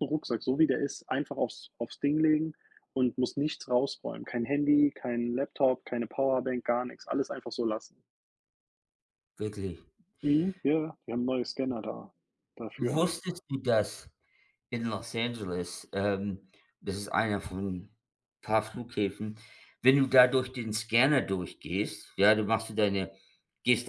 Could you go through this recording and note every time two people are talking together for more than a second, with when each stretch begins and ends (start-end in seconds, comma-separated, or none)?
none